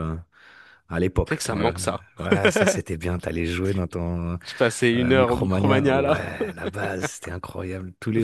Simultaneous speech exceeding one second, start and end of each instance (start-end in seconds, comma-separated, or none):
5.0-6.2